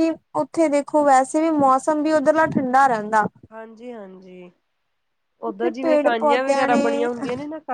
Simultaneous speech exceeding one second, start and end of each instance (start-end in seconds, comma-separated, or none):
5.5-6.8